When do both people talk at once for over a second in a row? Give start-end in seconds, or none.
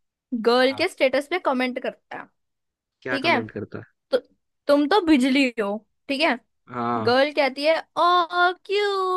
none